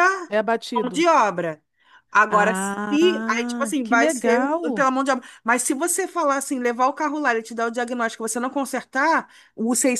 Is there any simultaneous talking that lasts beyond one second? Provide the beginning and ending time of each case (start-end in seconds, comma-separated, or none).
2.3-4.9